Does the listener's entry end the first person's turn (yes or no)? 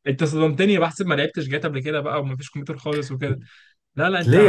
yes